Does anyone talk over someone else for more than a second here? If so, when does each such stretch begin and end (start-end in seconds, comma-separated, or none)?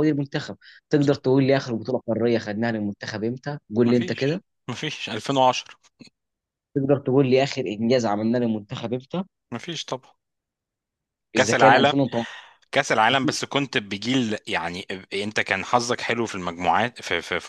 none